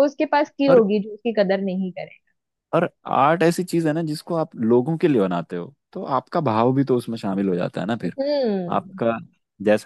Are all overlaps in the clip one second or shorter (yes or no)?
yes